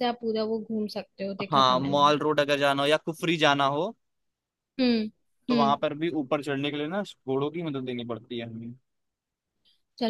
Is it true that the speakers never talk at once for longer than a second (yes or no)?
yes